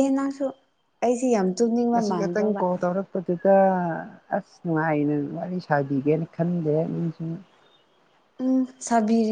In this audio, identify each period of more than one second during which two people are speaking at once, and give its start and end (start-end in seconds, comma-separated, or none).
none